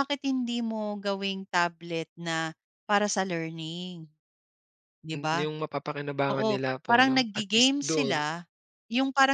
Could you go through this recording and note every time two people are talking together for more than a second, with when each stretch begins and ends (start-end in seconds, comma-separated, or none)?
6.3-8.2